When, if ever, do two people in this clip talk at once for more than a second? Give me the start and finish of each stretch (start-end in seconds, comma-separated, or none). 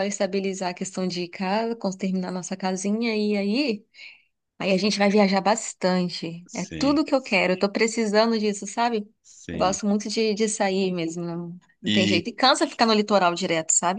none